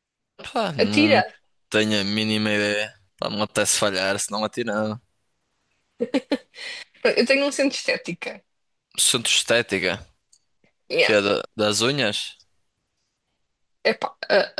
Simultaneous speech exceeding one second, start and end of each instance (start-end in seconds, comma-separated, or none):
none